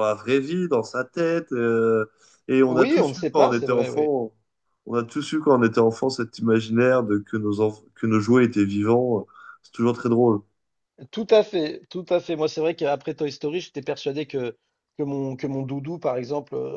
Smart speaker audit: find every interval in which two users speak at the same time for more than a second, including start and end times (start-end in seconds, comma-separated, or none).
2.7-4.1